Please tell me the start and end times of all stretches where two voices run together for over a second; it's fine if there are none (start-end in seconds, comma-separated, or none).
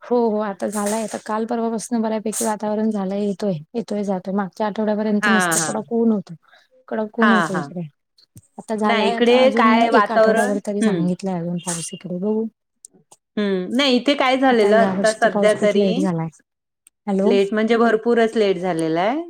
8.9-11.1, 14.7-16.1